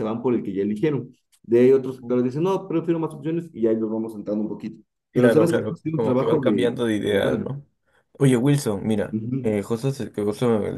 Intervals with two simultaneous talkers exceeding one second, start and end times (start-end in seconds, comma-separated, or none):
5.1-7.5